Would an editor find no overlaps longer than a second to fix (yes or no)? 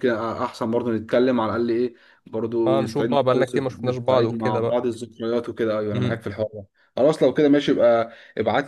no